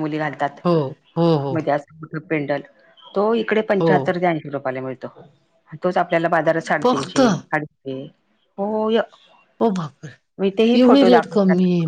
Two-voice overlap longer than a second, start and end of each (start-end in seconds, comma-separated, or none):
none